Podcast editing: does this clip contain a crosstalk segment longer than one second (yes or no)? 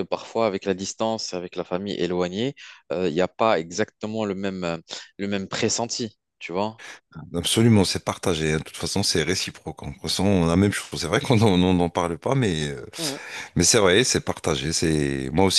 no